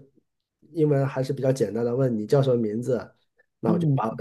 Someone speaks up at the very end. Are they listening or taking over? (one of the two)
listening